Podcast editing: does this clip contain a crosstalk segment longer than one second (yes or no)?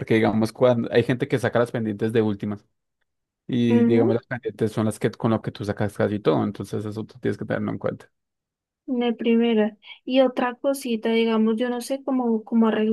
no